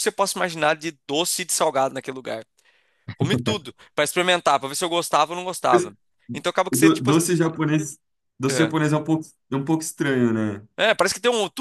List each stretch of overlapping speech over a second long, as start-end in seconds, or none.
none